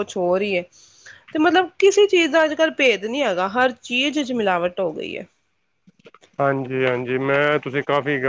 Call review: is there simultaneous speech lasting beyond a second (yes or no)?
no